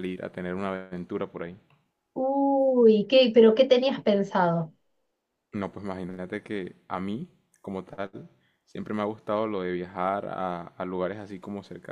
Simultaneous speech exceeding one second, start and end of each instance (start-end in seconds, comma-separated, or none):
none